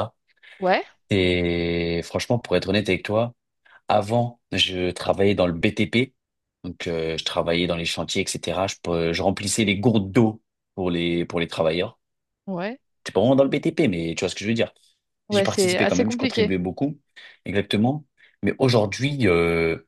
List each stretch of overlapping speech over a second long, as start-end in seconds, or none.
15.3-16.5